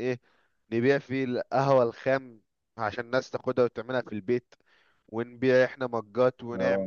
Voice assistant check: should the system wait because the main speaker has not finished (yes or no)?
yes